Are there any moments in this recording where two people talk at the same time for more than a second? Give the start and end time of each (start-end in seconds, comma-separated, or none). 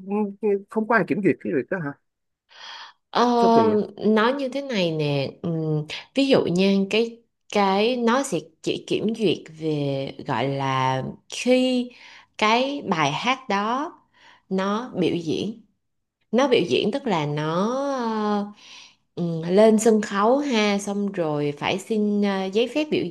none